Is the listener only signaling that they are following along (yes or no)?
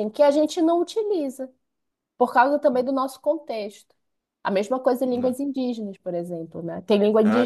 no